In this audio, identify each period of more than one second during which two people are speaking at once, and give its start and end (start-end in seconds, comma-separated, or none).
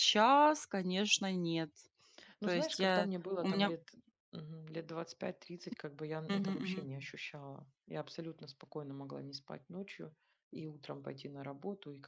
2.4-3.7